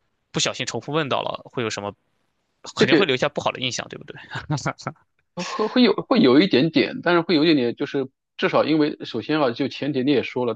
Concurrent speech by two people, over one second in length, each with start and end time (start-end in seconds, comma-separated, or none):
none